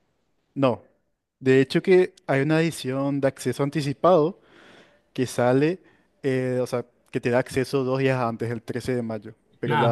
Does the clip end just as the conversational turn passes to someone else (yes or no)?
yes